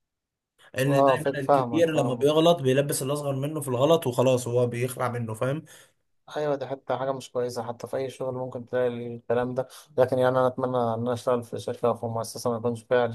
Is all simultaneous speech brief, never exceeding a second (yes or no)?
no